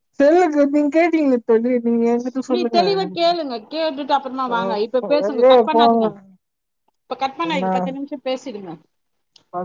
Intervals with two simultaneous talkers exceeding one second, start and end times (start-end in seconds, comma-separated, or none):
4.5-6.0